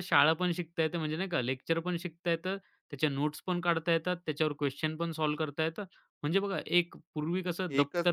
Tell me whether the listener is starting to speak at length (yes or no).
yes